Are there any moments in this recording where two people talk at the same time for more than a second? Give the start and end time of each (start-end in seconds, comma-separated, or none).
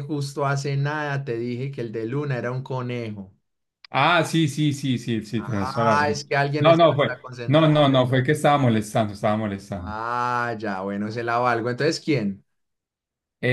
5.4-7.9